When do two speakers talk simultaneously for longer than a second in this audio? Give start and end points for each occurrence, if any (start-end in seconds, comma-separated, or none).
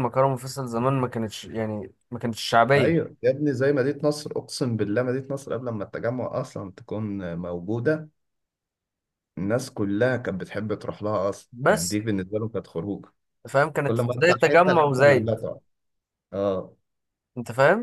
13.8-15.4